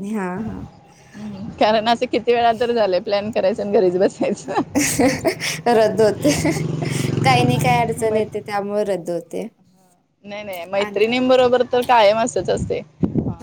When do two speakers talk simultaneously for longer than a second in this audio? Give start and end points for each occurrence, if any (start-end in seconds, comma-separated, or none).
none